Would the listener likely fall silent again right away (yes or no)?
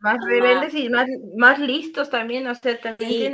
no